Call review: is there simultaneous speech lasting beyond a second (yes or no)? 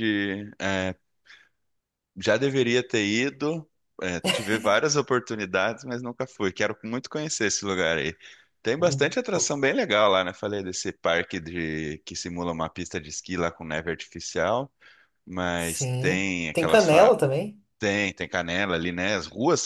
yes